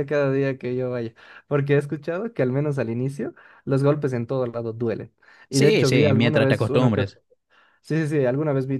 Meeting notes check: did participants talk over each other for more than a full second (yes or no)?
yes